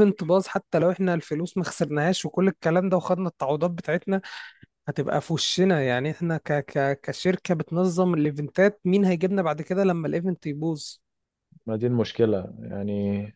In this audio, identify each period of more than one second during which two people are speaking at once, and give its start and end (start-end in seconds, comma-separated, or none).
none